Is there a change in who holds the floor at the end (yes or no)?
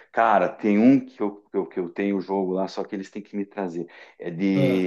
no